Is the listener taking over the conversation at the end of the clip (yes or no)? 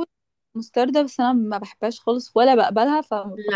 yes